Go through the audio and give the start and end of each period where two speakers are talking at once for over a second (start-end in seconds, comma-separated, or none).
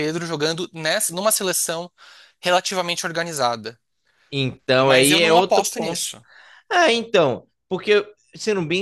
4.8-6.1